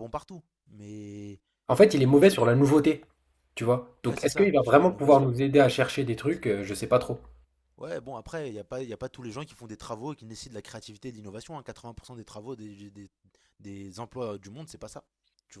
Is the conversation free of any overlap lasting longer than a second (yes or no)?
no